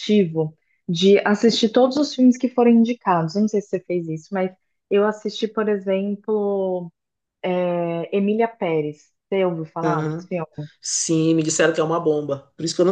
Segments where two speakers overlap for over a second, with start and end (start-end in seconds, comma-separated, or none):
none